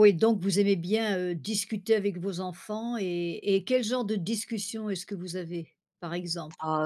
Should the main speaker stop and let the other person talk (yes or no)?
yes